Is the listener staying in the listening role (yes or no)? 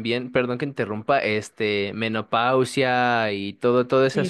no